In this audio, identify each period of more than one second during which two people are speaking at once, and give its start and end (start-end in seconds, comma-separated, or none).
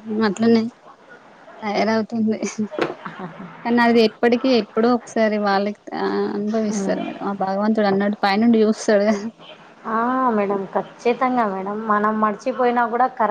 none